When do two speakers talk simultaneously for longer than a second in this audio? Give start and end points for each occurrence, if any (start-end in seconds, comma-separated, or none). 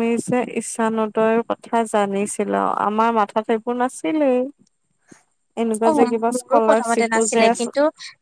5.9-7.6